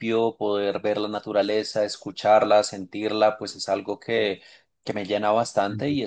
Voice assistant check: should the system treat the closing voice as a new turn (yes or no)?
no